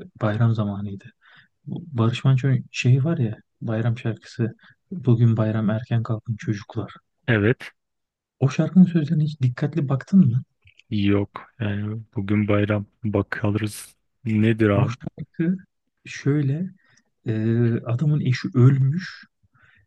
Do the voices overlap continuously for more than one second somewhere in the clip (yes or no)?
no